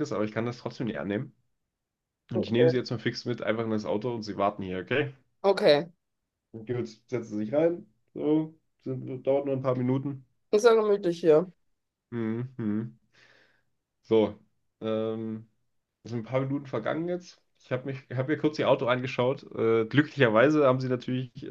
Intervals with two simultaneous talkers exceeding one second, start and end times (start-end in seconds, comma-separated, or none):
none